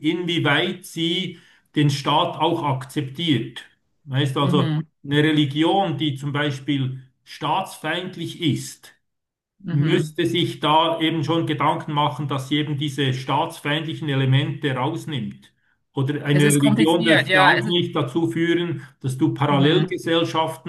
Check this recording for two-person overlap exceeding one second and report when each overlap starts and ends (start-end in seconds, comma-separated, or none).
16.3-17.8